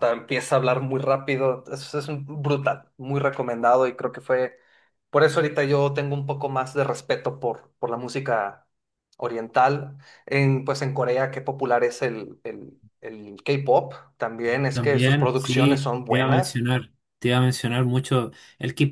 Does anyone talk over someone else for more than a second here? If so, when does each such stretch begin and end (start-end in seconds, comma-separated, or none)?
14.7-16.6